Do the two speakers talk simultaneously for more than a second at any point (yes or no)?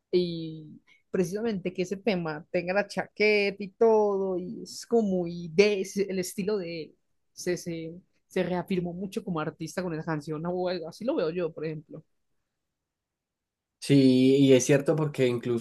no